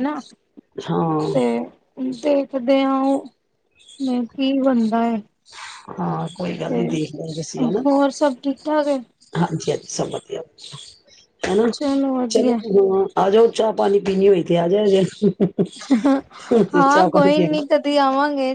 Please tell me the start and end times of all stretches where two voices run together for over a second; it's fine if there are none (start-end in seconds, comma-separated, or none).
none